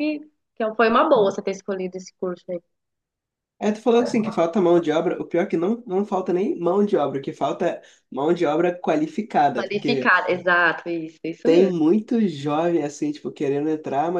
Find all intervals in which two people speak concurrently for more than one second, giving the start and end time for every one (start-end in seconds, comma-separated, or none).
none